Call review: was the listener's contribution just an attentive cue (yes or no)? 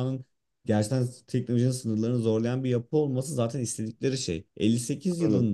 yes